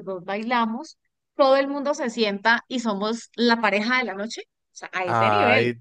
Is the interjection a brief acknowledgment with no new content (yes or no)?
no